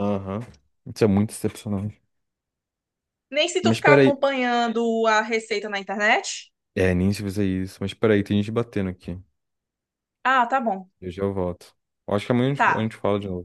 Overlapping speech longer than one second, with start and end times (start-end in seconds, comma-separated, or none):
none